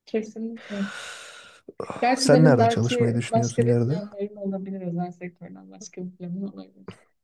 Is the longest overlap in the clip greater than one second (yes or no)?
yes